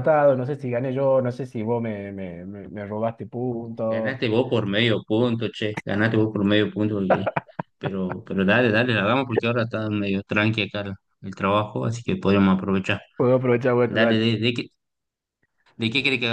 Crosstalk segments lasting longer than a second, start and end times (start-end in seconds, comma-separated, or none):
none